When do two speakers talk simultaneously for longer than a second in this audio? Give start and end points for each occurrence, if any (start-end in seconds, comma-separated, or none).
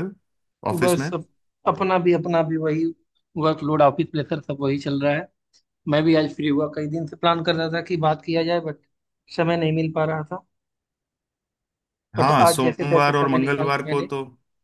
12.2-14.0